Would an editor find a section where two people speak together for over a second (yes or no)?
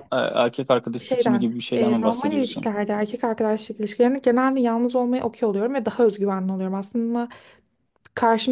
yes